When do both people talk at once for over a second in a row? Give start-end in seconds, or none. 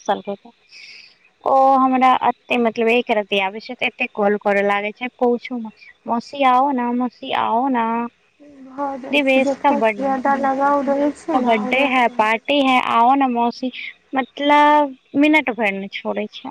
9.1-11.7